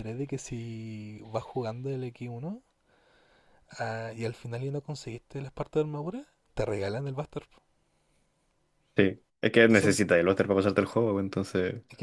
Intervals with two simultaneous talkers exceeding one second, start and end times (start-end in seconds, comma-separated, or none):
none